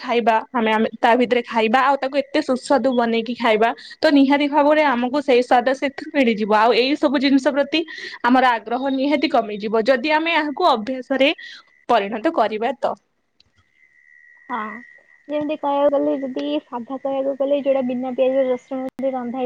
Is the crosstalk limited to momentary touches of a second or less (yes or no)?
yes